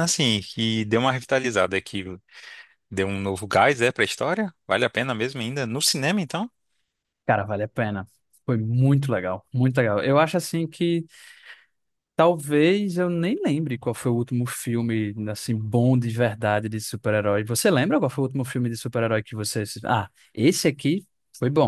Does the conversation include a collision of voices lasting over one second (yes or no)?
no